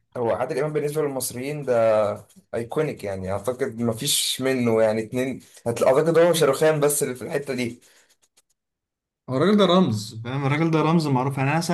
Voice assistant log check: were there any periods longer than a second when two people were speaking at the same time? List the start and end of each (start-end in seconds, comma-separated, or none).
none